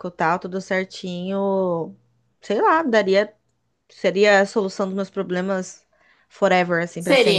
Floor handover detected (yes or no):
yes